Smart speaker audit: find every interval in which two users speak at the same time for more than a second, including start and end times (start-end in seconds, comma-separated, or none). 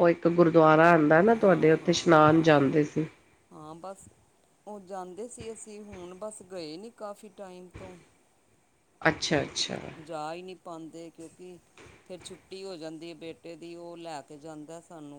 1.4-2.8